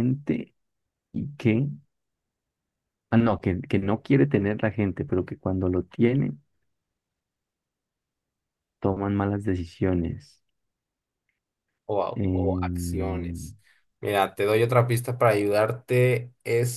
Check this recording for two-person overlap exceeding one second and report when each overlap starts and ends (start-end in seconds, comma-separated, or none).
12.1-13.5